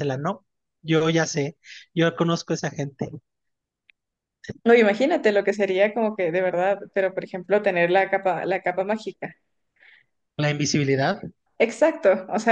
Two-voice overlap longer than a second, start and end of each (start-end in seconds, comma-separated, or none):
none